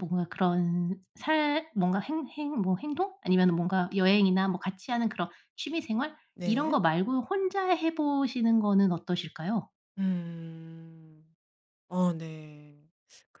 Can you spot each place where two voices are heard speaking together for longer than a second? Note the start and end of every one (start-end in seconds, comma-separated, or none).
none